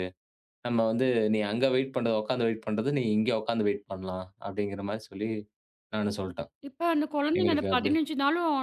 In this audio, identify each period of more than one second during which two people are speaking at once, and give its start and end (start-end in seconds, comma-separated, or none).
none